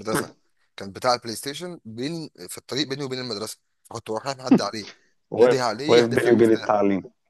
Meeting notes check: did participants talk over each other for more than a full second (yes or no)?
yes